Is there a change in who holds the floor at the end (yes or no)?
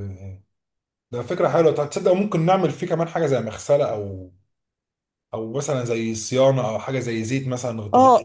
yes